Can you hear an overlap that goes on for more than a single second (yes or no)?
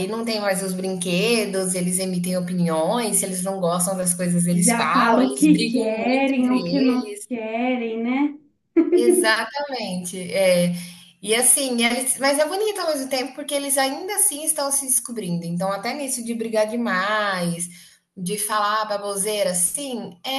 yes